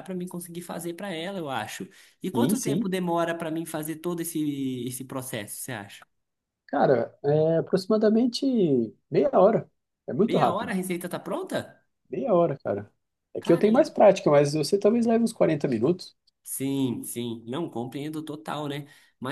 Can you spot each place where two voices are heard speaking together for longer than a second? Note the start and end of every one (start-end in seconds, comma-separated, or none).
none